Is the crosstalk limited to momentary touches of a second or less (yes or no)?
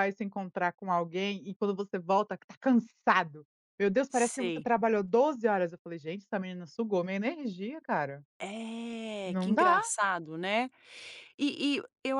yes